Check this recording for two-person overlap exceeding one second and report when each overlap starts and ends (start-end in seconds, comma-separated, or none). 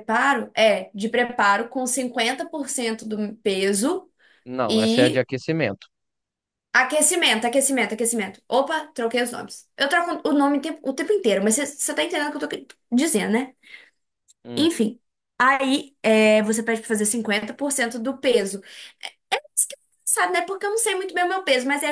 none